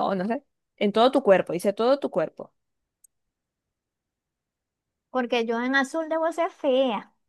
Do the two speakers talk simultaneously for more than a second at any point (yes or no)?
no